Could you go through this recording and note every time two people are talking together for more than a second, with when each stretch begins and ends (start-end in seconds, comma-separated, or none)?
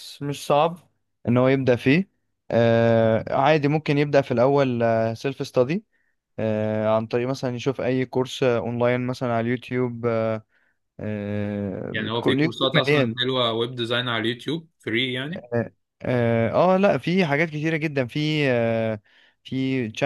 11.9-13.2